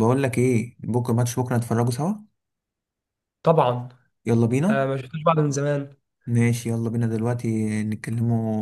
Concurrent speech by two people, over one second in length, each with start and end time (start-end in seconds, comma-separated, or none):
none